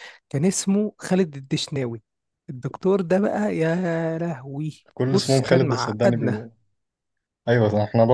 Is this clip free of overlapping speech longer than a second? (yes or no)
no